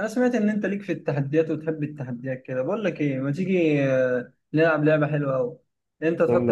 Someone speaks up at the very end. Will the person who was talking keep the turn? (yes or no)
yes